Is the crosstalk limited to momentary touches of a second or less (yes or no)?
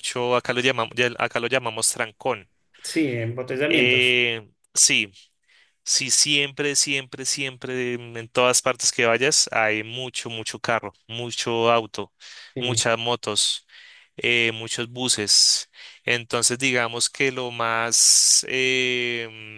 yes